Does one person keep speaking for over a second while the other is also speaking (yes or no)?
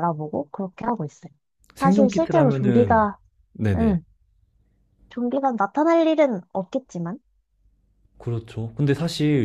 yes